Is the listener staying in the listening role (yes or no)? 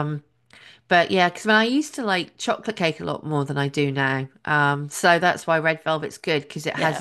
yes